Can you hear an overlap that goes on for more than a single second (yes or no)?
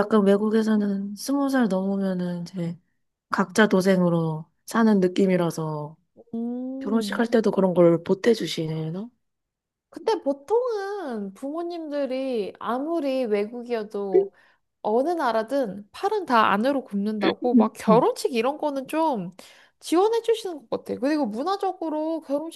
no